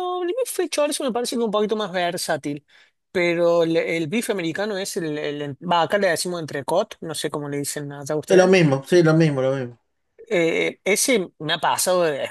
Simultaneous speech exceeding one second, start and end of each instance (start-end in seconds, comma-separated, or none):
none